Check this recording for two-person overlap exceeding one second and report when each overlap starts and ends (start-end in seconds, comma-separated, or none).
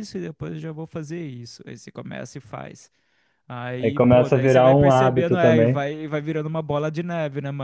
3.8-5.8